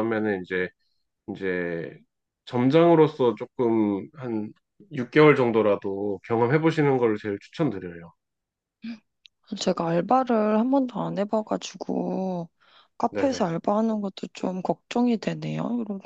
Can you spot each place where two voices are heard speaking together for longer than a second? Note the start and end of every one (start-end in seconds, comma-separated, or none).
none